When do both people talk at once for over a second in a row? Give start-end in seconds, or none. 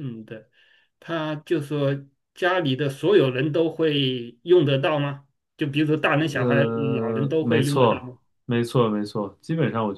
6.2-8.1